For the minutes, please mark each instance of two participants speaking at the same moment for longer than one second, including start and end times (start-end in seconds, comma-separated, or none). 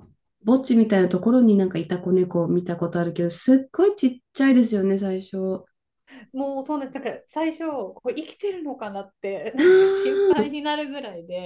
none